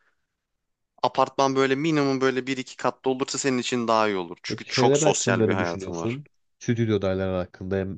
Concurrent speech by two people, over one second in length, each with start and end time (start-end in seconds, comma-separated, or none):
4.5-6.2